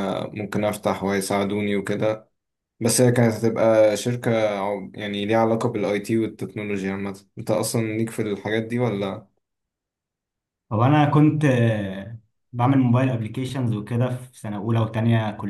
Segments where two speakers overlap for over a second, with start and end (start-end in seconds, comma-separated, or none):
none